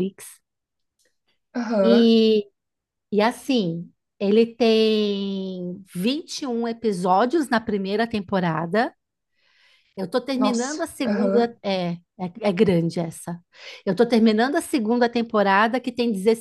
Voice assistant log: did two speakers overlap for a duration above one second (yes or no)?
yes